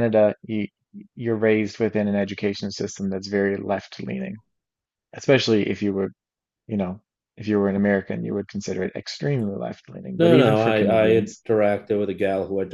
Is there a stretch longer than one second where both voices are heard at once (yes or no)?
yes